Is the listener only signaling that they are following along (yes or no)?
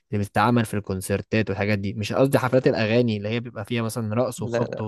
yes